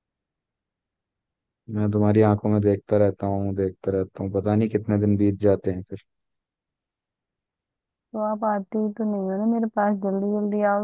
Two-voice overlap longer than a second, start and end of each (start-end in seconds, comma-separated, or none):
none